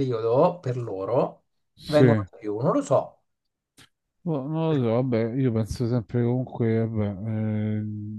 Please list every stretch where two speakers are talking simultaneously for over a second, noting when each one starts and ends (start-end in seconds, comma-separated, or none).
none